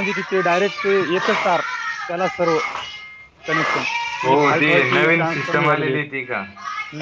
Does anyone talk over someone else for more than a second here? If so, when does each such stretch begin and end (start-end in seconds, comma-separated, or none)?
4.2-6.0